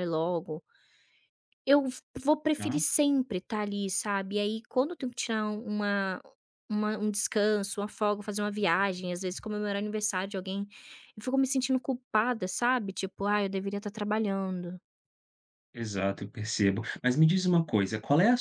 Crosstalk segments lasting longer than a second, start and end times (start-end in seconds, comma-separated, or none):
none